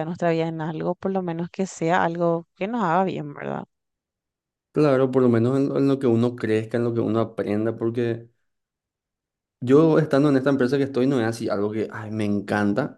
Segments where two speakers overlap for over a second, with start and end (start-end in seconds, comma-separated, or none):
none